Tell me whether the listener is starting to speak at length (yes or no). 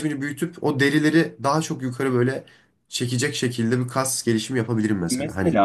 yes